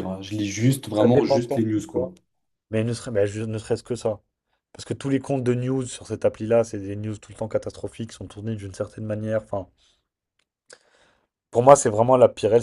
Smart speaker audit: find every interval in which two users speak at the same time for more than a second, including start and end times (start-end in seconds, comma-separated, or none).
0.9-2.1